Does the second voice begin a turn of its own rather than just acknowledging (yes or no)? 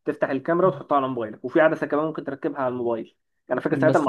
no